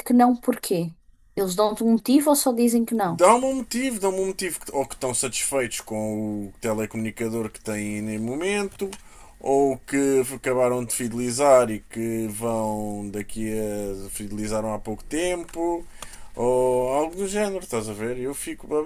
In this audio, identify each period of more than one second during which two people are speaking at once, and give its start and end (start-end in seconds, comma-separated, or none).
none